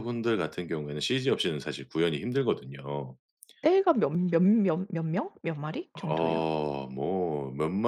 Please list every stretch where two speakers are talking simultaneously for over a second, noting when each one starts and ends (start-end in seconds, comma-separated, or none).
none